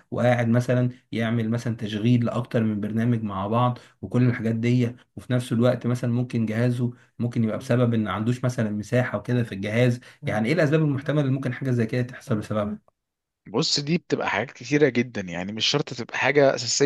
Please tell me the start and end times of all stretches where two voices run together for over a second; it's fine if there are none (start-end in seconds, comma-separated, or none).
none